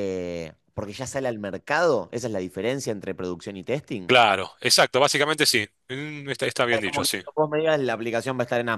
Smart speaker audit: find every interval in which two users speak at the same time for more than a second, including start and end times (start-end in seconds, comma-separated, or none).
none